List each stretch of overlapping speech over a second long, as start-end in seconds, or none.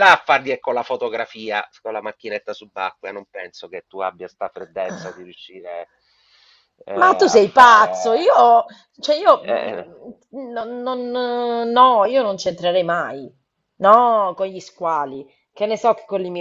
7.0-8.3